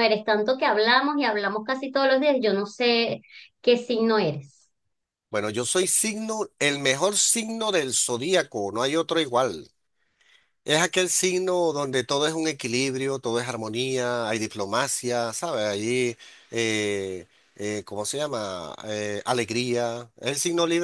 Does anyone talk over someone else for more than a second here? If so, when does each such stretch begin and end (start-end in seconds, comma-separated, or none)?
none